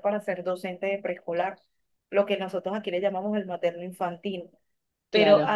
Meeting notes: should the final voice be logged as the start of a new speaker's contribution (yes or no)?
no